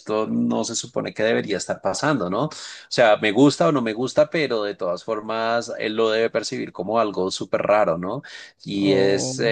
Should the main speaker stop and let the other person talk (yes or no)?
no